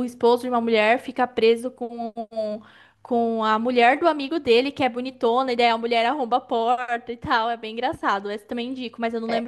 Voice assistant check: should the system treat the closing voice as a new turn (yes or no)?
yes